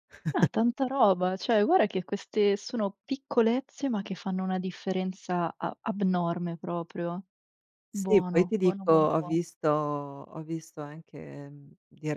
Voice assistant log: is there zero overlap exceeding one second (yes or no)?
no